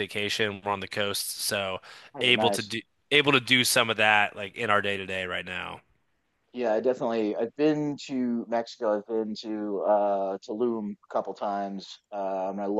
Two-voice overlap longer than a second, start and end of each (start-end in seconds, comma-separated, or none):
none